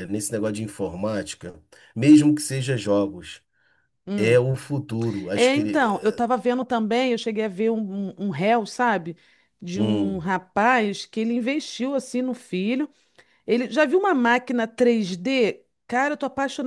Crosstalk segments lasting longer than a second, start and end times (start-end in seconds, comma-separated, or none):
none